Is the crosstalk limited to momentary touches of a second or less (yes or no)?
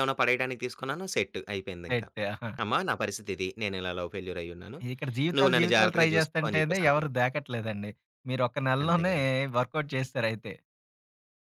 no